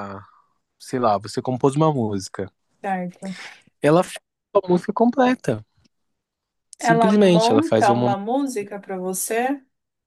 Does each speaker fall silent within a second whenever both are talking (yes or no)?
no